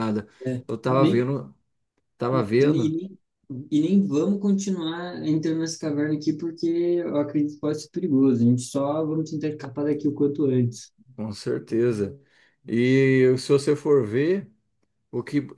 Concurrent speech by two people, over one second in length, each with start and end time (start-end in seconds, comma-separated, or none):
none